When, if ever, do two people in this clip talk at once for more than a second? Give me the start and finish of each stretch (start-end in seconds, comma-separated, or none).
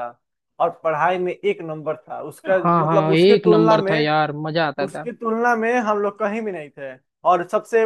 2.6-4.1